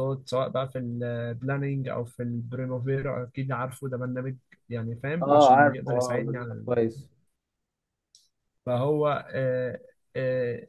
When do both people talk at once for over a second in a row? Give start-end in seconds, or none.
5.2-6.7